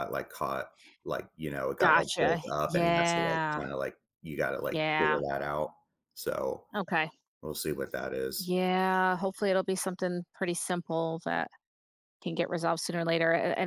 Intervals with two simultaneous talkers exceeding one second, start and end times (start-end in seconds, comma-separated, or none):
1.8-3.6